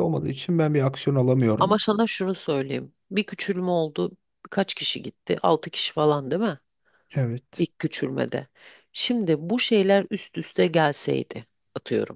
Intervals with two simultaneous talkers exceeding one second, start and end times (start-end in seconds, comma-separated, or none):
none